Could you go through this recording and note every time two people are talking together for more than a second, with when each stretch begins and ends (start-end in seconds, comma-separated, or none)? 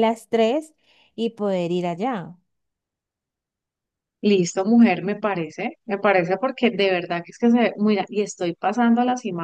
none